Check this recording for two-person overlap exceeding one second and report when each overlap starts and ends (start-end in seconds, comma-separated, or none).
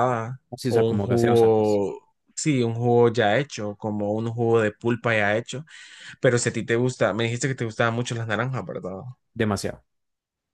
0.5-1.8